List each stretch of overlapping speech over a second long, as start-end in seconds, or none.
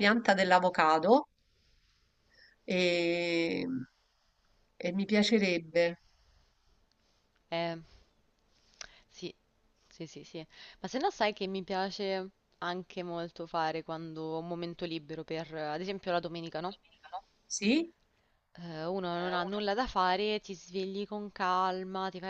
none